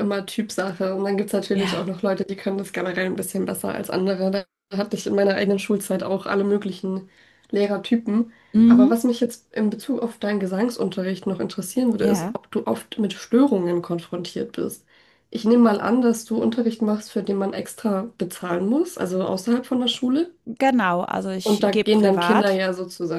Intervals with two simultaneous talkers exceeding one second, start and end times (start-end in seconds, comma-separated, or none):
21.4-22.6